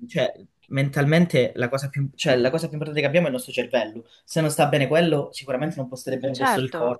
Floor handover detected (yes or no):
yes